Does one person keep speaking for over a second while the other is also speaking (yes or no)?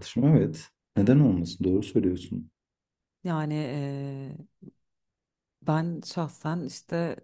no